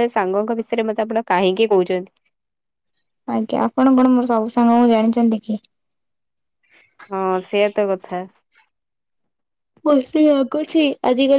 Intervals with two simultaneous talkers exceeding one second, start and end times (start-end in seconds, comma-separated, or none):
none